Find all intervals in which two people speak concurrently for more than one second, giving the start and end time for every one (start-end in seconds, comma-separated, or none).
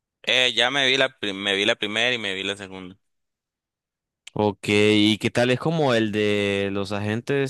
none